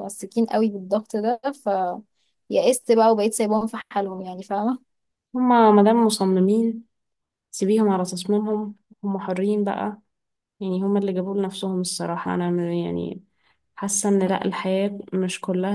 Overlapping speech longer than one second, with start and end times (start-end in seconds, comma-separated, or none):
none